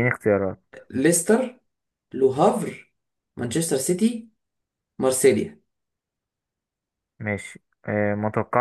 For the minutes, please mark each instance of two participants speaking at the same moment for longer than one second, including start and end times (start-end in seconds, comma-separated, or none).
none